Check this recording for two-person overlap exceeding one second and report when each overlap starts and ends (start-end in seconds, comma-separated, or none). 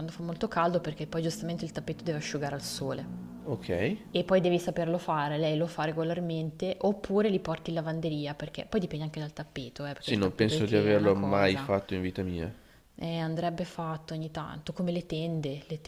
10.0-11.7